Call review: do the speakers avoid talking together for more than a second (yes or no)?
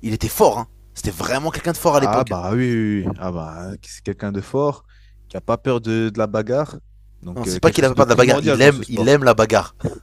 no